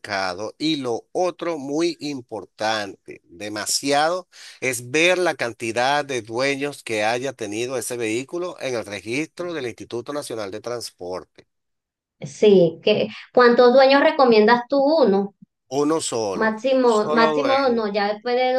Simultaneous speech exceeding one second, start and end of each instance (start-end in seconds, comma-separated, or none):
16.3-17.8